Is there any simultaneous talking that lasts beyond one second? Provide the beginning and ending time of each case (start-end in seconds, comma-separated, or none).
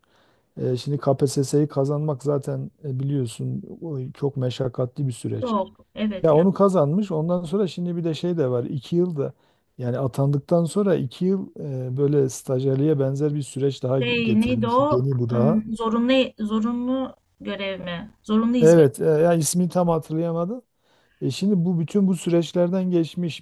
14.0-15.6